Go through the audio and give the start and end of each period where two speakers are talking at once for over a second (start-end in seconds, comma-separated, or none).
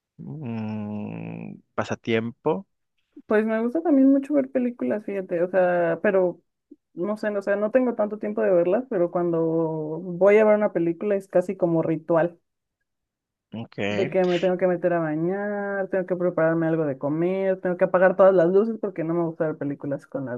none